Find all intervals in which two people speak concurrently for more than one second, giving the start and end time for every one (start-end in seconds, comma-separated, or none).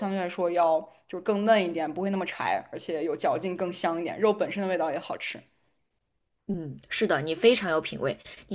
none